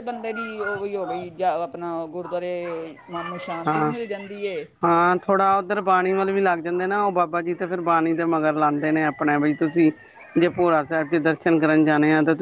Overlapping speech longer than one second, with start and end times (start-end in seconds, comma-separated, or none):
none